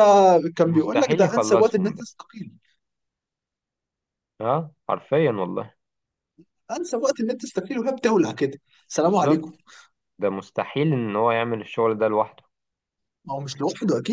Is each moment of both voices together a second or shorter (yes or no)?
no